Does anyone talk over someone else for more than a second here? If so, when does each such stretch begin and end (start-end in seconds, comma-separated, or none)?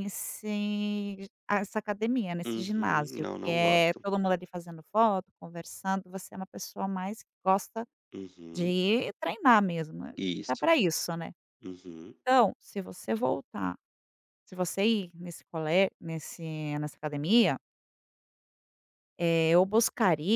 2.5-4.0